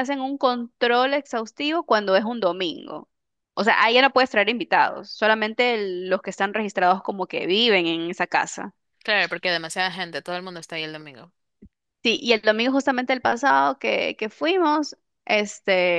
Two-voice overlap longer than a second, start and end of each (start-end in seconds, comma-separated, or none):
none